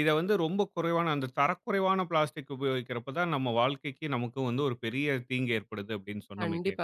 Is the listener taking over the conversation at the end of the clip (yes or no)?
yes